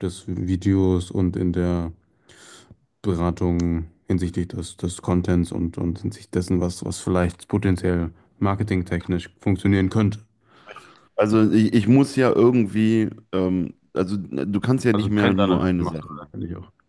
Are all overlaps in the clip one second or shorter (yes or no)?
no